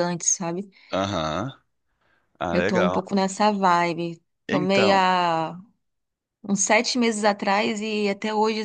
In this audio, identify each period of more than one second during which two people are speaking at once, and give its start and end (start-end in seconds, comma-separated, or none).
none